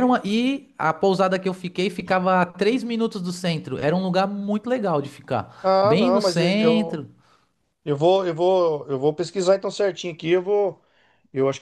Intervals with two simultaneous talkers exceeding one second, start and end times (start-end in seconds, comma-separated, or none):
5.6-7.0